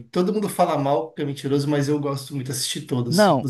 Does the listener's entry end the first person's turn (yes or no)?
yes